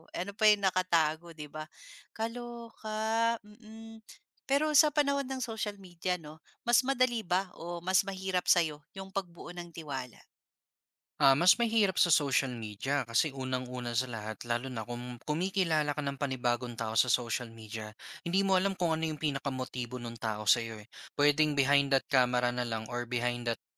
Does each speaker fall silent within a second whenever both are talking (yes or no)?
yes